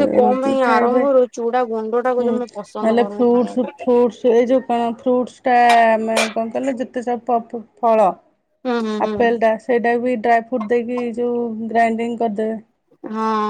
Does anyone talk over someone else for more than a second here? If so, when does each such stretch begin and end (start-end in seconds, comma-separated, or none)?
2.2-3.9